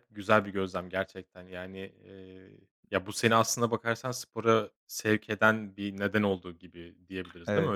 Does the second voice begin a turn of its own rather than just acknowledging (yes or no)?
yes